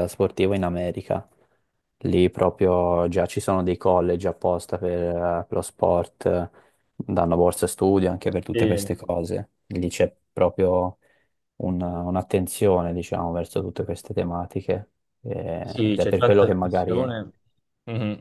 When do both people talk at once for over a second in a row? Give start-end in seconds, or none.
15.6-17.0